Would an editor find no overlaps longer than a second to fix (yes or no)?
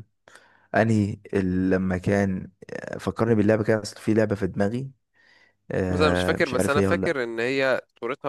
no